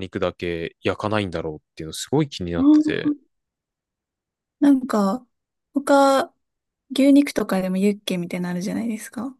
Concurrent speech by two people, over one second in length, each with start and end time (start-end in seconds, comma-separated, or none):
none